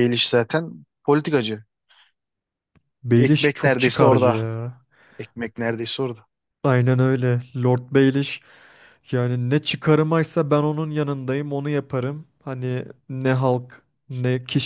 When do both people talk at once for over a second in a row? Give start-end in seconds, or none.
3.2-4.4